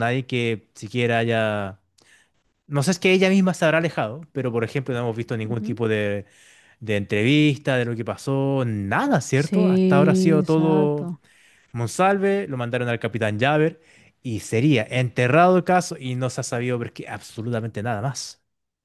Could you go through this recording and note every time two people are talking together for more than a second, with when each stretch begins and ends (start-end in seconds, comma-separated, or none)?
9.3-11.1